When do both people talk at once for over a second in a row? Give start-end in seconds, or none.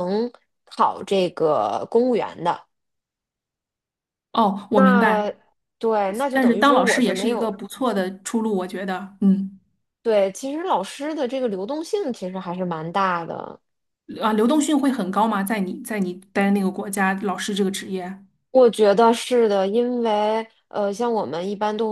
6.3-7.5